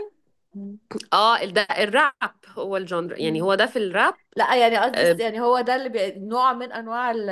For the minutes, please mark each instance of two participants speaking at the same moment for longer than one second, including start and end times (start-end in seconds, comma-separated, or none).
none